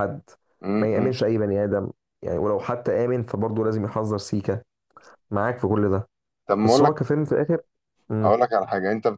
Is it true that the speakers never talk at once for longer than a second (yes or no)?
yes